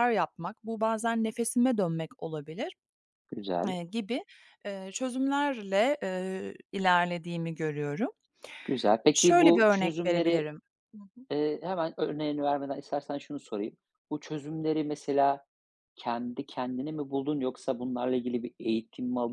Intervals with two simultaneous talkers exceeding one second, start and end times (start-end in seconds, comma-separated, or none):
9.1-10.5